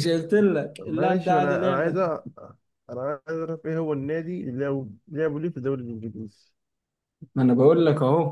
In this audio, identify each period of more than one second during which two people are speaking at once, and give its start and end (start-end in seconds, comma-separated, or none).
0.8-2.0